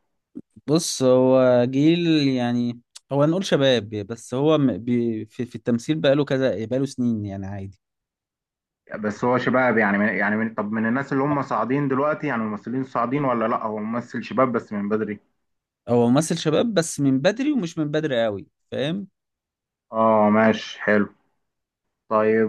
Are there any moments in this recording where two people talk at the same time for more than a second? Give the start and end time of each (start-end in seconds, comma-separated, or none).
none